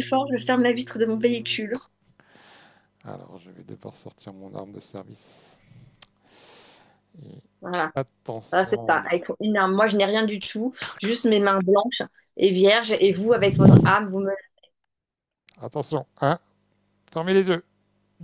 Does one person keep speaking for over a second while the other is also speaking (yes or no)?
no